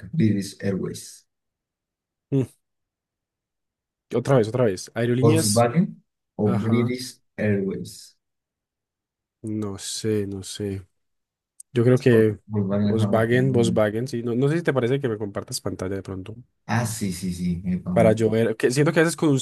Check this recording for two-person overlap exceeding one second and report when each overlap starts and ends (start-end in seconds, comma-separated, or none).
12.5-13.8